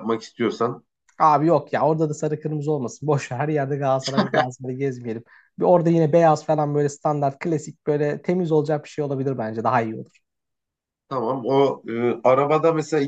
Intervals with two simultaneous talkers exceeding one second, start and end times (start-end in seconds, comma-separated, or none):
none